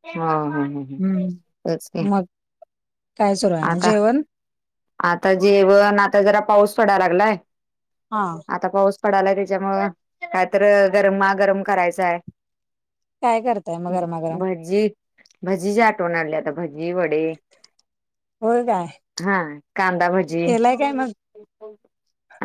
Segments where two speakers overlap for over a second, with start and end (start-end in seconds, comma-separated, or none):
none